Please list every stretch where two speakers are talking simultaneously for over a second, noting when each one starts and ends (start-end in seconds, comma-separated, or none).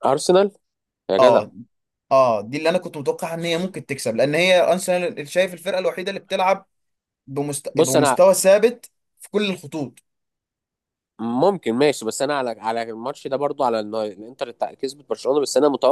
none